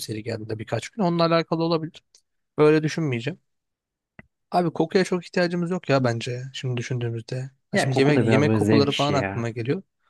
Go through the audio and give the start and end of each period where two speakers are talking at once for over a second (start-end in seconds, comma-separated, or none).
7.7-9.5